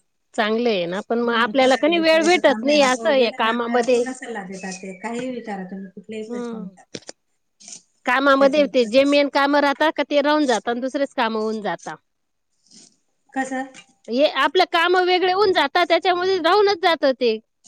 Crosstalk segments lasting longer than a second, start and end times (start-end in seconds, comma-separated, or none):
1.2-4.0